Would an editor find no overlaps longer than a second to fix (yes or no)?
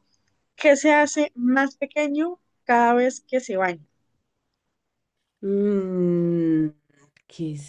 yes